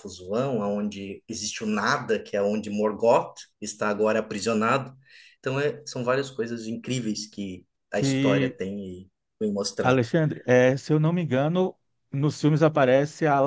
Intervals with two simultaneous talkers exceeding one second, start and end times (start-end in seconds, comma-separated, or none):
none